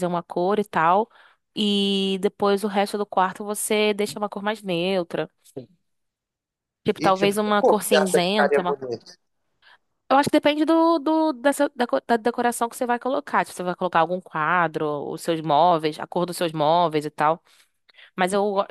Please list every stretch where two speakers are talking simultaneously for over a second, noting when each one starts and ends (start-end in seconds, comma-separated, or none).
7.0-8.8